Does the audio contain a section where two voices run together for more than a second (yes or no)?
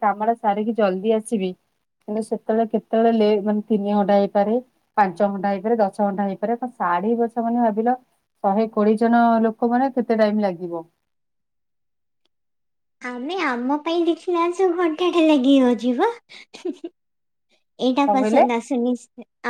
no